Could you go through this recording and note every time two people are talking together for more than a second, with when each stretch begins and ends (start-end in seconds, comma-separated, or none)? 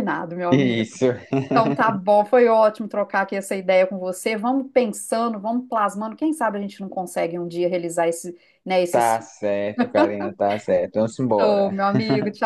none